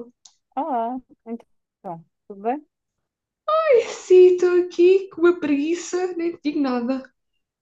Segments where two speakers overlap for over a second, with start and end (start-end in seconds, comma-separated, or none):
none